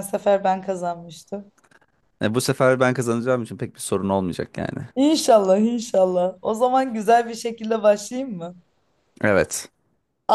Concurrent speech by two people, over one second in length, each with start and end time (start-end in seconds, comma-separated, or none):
none